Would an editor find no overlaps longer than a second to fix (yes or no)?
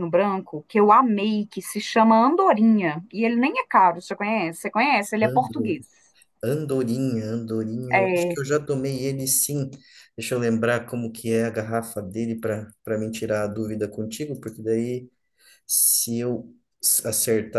yes